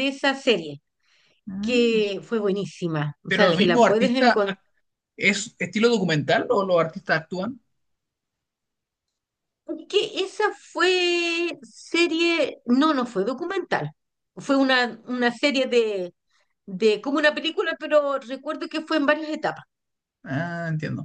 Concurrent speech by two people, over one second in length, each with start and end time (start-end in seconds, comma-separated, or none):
3.3-4.5